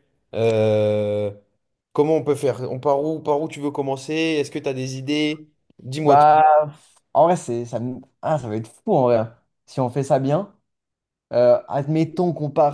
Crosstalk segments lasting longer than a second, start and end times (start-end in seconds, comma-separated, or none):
none